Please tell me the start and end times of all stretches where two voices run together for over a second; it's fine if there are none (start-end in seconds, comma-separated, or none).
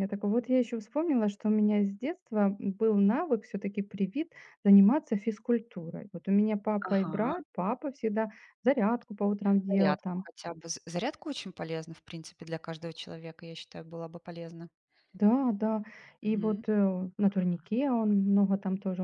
none